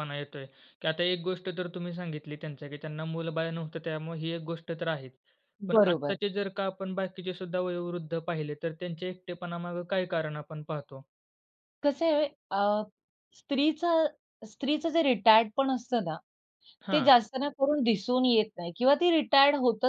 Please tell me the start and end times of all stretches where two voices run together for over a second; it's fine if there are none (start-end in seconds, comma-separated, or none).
none